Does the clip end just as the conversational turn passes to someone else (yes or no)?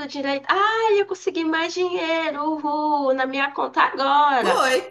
yes